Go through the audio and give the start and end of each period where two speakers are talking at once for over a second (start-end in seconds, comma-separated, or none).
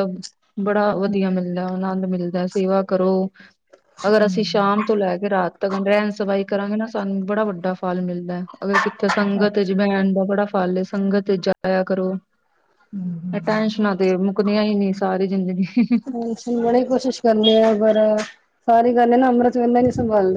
none